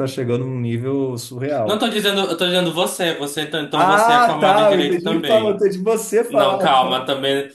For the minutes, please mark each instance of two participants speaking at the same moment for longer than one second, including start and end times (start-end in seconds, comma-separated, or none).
3.7-5.6